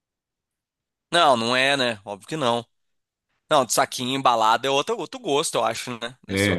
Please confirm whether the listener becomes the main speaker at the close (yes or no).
yes